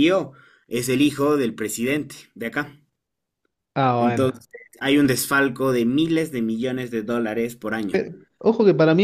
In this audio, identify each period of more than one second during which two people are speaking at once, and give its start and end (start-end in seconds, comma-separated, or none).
none